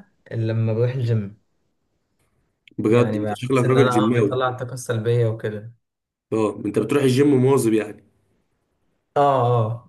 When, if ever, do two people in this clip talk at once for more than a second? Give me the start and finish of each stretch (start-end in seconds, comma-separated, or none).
2.9-4.5